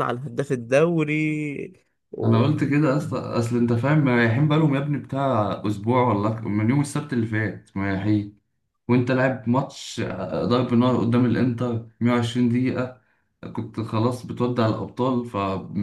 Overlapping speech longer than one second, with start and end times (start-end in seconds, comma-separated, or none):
none